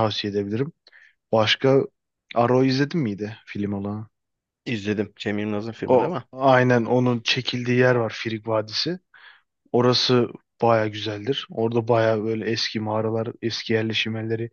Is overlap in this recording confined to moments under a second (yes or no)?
yes